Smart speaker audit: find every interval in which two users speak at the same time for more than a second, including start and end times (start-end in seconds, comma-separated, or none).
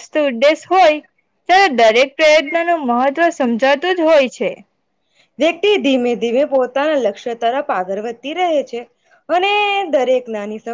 none